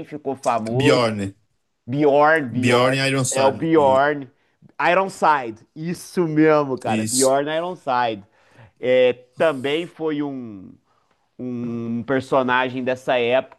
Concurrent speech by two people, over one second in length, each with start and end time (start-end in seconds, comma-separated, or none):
2.5-4.0